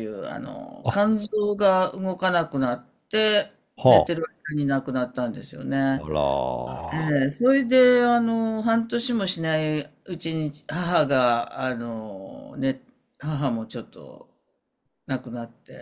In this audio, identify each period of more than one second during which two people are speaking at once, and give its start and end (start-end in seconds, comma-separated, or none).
none